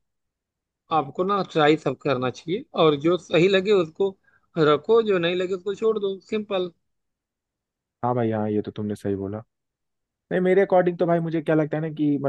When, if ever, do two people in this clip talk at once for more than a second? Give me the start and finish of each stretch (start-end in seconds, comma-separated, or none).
none